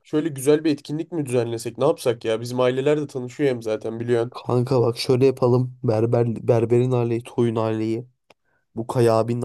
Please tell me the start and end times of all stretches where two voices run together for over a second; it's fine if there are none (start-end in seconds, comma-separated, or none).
none